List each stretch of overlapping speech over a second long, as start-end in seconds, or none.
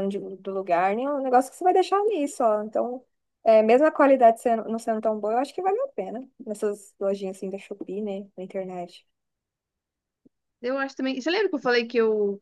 none